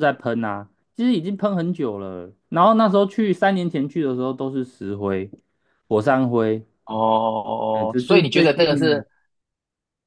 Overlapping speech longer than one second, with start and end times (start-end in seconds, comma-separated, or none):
7.7-9.0